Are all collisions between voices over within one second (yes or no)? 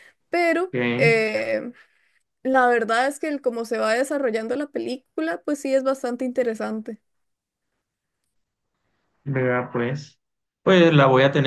yes